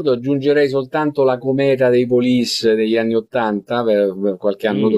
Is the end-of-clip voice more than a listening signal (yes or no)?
yes